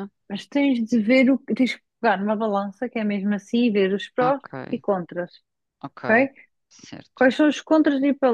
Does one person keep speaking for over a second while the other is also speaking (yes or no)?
no